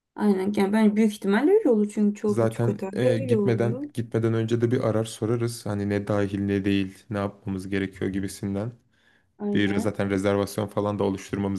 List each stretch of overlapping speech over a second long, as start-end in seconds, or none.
2.3-3.8